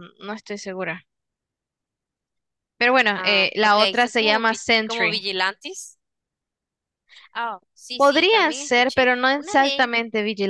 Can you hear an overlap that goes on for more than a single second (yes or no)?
yes